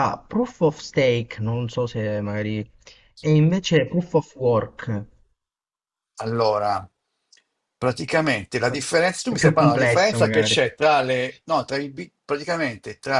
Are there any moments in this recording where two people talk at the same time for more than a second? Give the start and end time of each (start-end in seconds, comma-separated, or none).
9.3-10.6